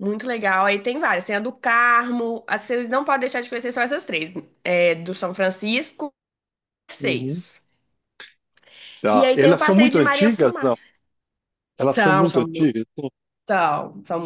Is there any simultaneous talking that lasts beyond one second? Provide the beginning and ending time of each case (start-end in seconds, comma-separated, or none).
9.1-10.7